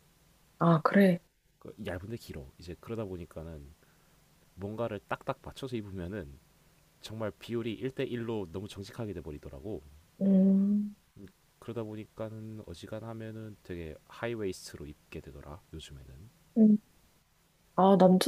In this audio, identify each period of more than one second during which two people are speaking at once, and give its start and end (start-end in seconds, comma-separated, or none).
none